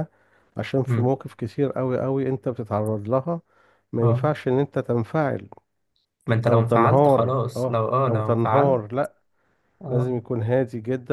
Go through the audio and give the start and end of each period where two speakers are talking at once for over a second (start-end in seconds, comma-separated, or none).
6.5-8.8